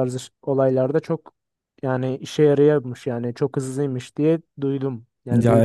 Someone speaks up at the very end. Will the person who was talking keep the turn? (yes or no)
no